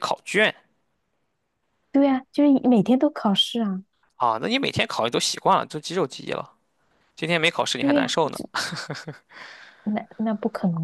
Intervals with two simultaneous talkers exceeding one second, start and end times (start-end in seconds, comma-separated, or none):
none